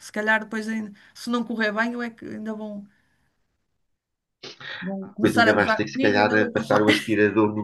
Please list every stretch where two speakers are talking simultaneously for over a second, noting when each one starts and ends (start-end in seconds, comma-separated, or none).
5.0-6.8